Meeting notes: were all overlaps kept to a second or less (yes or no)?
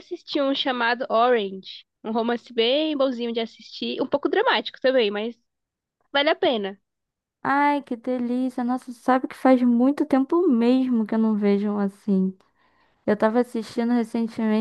yes